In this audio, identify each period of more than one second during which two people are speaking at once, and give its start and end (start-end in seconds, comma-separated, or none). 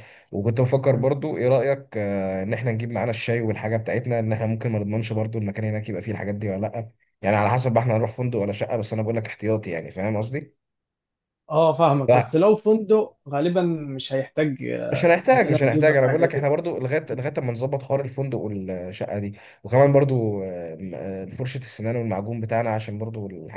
14.9-16.5